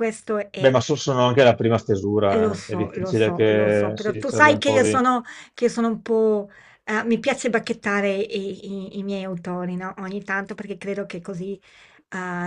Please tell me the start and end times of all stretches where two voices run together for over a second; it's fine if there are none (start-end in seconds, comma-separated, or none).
2.2-5.0